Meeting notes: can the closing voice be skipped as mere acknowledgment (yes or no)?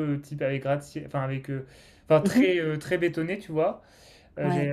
yes